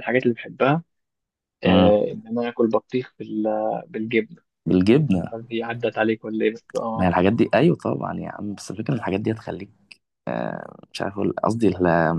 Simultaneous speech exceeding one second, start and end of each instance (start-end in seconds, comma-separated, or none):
none